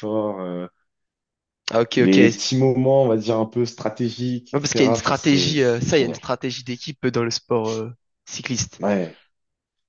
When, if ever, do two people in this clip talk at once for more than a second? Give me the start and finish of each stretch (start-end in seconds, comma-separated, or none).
4.5-6.2